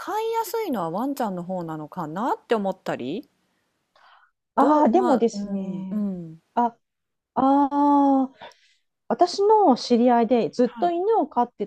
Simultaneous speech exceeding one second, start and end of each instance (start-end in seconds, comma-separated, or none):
4.6-6.0